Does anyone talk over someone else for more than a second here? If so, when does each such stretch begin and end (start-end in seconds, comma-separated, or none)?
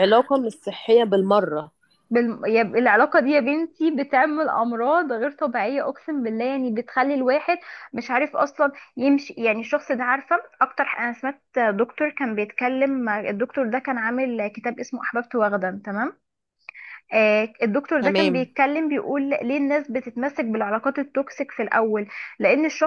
none